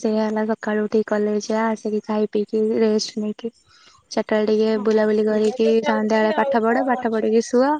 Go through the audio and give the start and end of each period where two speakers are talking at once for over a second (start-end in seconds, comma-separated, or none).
4.8-7.2